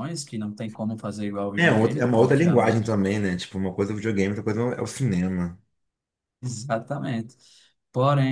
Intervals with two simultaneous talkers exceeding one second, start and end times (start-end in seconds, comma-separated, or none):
1.6-3.0